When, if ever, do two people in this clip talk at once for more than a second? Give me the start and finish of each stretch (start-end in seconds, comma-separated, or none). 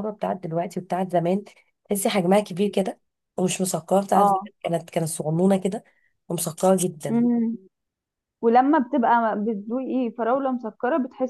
none